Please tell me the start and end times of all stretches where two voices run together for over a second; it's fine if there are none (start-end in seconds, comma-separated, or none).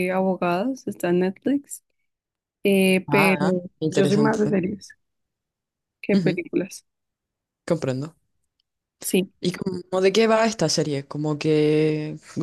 3.1-4.6